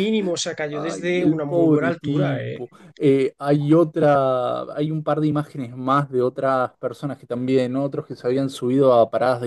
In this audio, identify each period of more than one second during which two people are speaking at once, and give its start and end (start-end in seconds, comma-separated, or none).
0.7-2.6